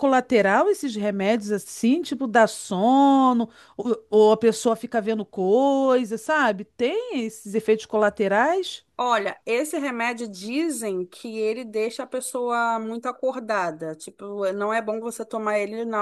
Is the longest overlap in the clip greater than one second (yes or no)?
no